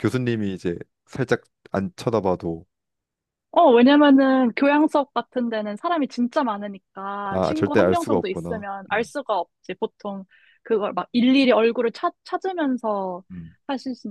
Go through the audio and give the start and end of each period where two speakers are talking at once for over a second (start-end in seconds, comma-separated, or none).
7.3-9.1